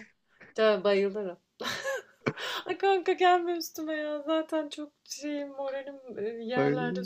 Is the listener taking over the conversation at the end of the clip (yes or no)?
yes